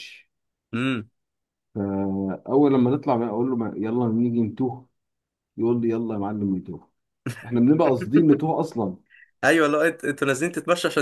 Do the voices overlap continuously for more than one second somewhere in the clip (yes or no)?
no